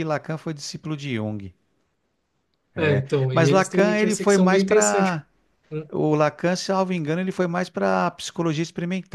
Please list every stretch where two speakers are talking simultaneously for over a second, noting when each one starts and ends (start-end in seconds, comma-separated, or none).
2.8-5.2